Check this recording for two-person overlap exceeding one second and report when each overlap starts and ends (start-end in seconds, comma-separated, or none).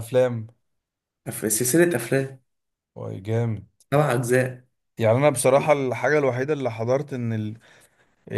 none